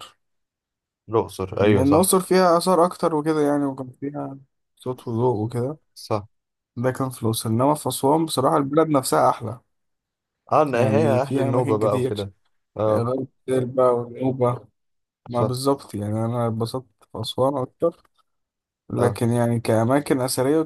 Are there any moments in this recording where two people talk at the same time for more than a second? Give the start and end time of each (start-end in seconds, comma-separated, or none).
10.7-12.1